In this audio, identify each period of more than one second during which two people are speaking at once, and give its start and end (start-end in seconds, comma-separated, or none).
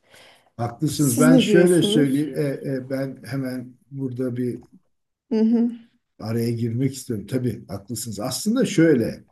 0.9-2.2